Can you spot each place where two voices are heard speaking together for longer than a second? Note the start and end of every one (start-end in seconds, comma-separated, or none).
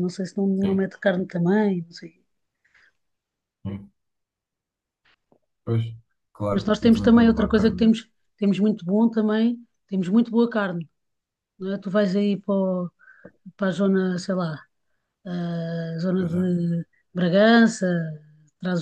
6.5-8.1